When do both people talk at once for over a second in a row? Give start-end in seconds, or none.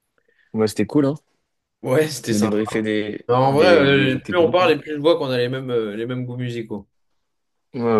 3.3-4.8